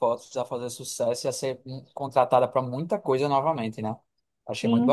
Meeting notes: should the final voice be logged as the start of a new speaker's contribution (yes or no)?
yes